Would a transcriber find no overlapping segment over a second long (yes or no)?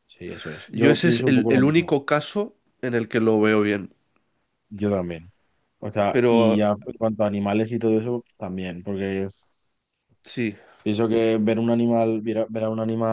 no